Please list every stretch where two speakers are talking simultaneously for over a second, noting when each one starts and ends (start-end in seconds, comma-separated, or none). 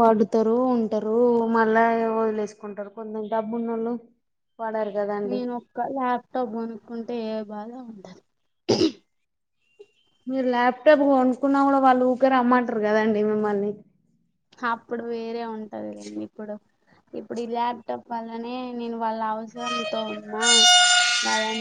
none